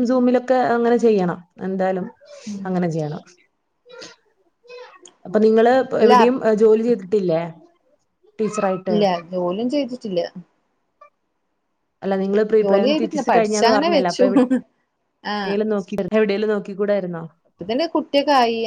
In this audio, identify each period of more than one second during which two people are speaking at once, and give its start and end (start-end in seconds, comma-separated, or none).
12.6-14.2